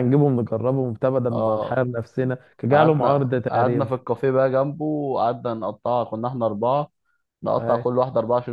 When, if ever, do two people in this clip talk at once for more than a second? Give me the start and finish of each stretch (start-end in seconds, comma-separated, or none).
2.7-3.9